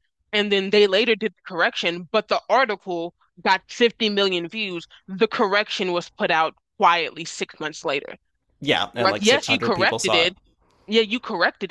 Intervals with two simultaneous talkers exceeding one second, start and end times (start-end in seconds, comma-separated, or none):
9.0-10.3